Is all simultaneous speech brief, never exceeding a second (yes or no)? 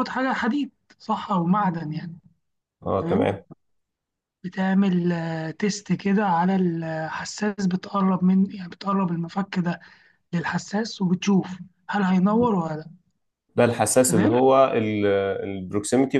yes